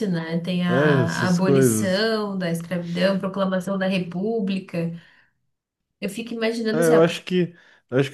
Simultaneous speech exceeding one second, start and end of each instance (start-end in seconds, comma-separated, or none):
0.7-2.0